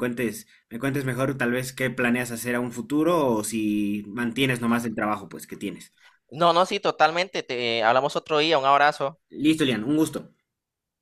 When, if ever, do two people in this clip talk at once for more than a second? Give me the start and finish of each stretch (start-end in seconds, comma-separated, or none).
none